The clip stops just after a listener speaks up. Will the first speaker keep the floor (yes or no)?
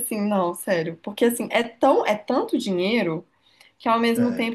yes